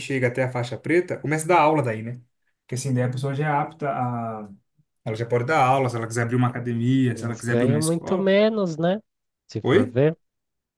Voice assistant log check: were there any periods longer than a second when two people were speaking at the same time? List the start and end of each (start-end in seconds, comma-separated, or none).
7.1-8.3